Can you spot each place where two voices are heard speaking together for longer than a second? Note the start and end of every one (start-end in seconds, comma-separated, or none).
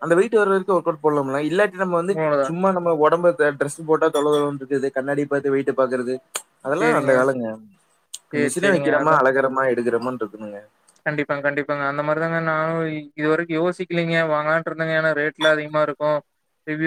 none